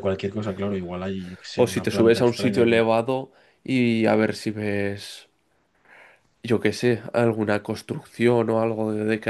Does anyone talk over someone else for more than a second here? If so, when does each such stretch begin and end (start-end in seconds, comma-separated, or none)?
1.6-2.8